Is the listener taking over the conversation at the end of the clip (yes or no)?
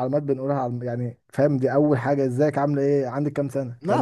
yes